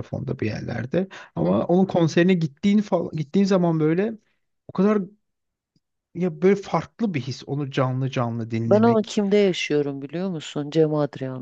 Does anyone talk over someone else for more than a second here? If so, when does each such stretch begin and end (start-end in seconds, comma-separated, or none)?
none